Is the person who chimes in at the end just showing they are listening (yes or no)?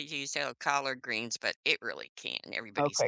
no